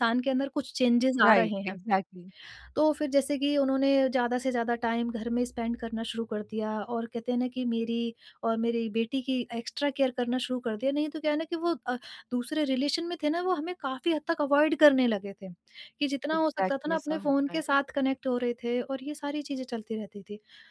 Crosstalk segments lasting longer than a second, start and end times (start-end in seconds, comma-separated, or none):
16.3-17.8